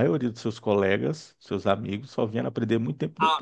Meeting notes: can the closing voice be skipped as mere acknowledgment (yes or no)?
no